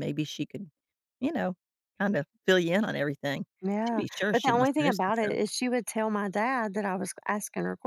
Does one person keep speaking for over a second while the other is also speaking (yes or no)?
yes